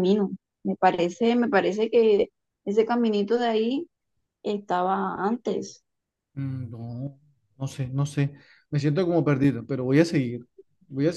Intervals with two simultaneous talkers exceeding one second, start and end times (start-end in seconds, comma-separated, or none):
none